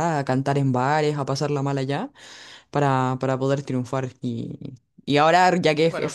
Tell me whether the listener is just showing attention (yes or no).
yes